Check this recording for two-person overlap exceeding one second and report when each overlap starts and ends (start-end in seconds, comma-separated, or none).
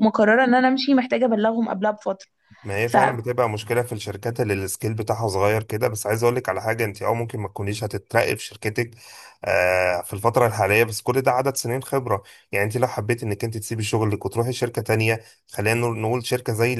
none